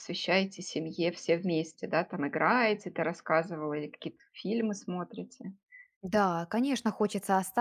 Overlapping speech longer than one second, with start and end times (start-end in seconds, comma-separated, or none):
none